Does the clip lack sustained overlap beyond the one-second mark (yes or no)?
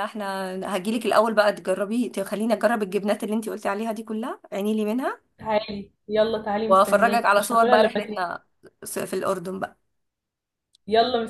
no